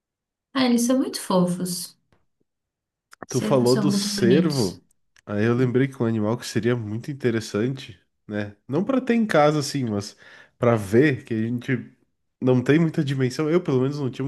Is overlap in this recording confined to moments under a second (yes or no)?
no